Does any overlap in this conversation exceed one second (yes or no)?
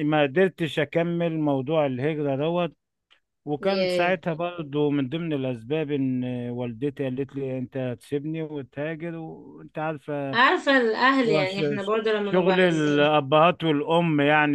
yes